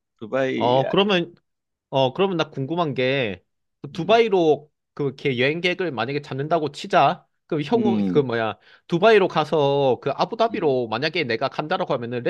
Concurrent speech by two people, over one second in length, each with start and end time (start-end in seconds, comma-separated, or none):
none